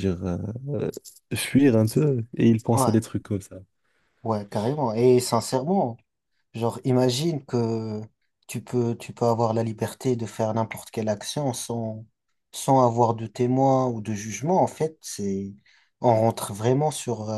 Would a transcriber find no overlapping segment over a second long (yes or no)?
yes